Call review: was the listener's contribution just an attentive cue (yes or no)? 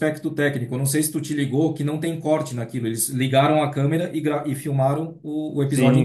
no